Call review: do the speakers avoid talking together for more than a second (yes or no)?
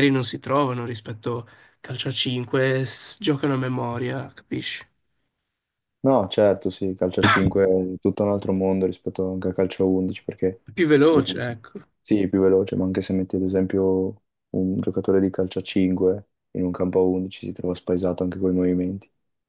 yes